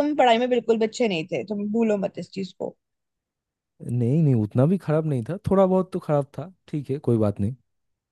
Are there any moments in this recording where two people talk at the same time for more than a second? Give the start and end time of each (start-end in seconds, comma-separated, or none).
none